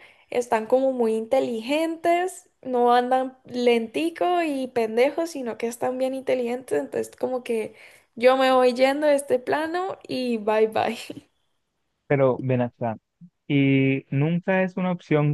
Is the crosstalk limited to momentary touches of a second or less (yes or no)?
yes